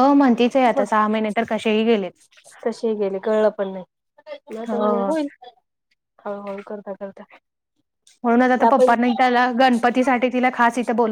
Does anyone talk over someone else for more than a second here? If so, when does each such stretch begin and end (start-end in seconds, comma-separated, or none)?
none